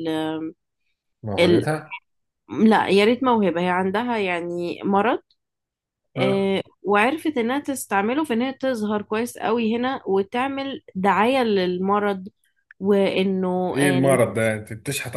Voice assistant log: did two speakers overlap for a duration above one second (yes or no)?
no